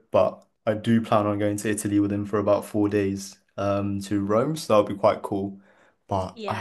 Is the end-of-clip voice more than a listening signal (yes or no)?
no